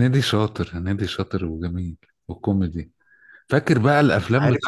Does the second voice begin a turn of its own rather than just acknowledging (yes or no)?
no